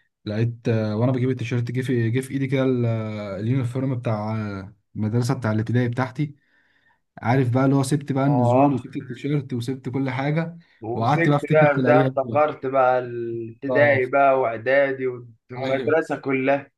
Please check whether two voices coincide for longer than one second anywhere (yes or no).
yes